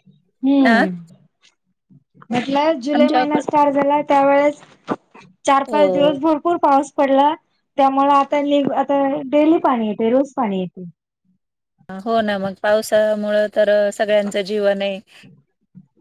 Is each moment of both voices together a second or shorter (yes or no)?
yes